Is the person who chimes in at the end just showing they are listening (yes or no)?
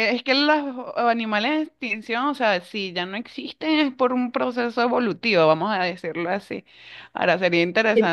no